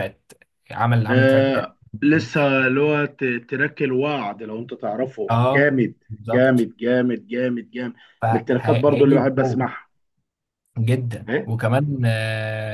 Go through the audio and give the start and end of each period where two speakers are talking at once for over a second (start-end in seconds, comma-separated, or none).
8.3-9.7